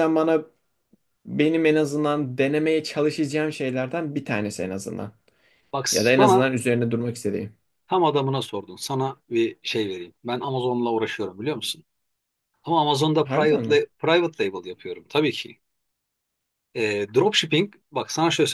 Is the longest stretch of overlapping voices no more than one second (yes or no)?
yes